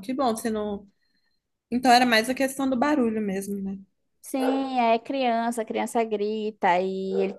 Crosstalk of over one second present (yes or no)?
no